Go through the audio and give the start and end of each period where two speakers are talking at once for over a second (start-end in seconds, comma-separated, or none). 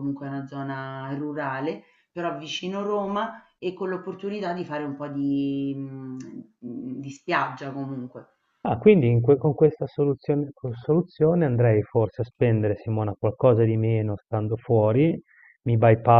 none